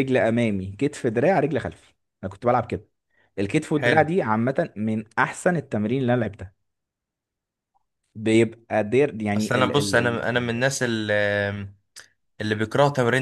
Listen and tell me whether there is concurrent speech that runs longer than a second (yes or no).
no